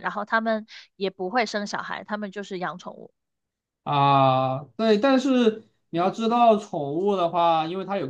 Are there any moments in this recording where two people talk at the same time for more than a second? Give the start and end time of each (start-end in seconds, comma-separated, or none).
none